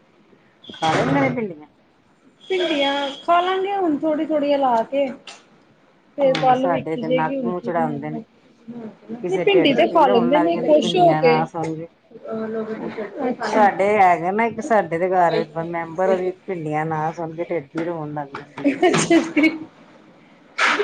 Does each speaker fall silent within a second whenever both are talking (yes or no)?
no